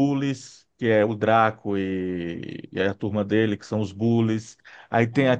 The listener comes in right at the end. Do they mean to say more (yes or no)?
no